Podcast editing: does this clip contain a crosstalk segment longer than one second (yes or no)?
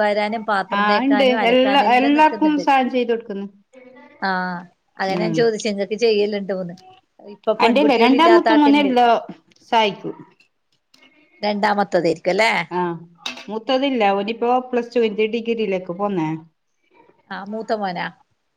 yes